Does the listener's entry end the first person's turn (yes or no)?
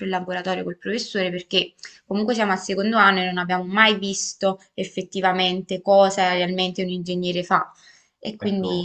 yes